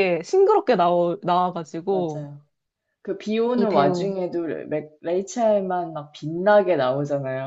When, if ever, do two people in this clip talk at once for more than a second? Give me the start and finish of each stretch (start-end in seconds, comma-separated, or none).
none